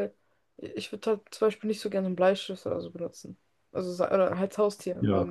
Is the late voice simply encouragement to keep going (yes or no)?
no